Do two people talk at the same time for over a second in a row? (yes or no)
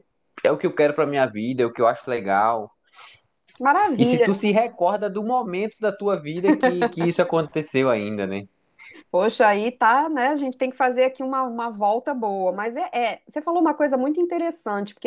no